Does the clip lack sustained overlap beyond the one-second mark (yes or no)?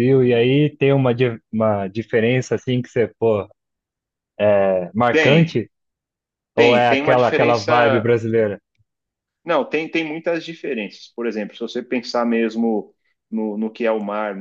no